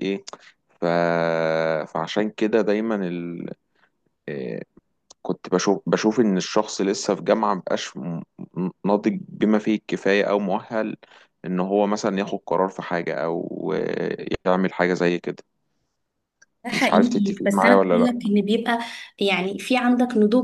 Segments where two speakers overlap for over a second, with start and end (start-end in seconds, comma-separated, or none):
16.7-18.2